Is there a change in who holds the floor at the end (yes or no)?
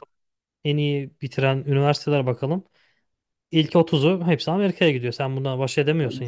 yes